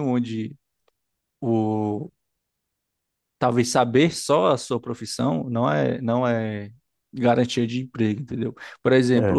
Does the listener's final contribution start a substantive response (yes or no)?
no